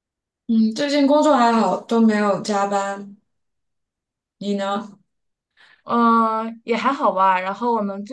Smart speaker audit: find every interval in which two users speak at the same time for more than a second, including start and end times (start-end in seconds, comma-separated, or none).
none